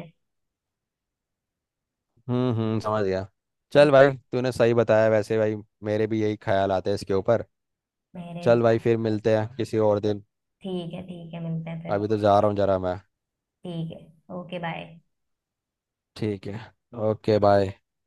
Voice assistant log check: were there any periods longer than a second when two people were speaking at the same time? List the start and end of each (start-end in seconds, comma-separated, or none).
none